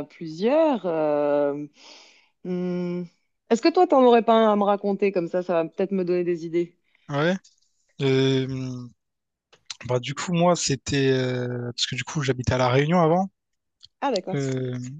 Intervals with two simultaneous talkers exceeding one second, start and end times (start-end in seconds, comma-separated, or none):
none